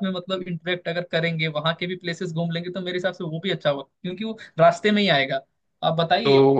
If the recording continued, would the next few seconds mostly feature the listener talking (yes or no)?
no